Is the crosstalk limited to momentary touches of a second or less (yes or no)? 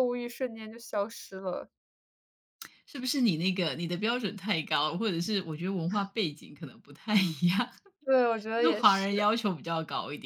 yes